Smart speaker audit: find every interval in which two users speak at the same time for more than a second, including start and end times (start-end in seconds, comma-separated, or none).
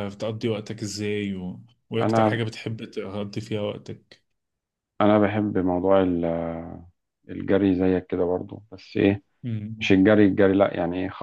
none